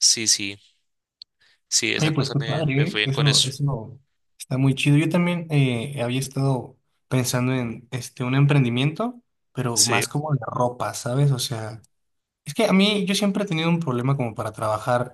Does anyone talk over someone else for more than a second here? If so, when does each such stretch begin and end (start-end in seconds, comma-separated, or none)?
2.0-3.5